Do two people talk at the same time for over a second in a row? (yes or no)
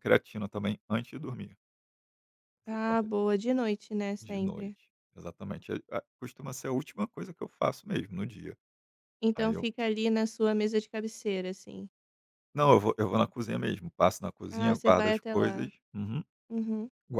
yes